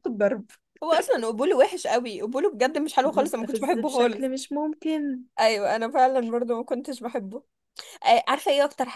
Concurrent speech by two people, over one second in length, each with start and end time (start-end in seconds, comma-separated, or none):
3.0-4.3